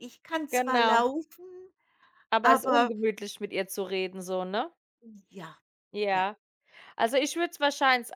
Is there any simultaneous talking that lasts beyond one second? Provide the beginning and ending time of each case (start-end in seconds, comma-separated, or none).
none